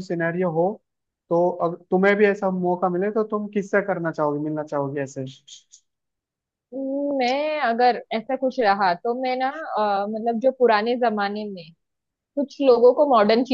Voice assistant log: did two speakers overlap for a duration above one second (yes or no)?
no